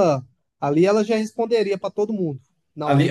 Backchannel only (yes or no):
no